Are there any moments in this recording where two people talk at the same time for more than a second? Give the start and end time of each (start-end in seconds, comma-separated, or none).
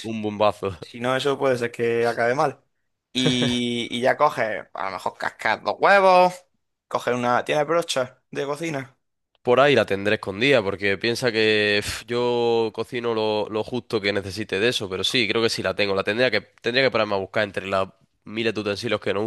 none